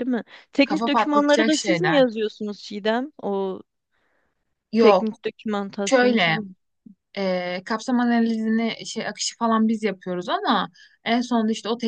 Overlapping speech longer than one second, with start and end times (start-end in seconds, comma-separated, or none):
0.6-2.1